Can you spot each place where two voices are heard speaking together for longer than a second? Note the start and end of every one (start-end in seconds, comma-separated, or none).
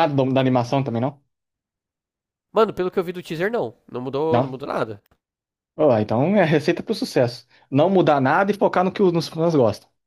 none